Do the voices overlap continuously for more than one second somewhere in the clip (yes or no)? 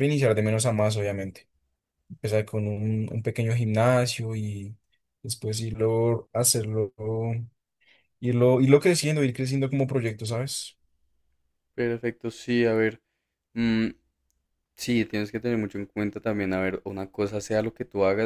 no